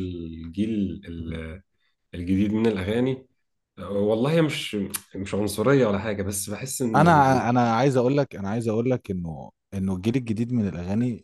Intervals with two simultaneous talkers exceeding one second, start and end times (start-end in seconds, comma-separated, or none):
none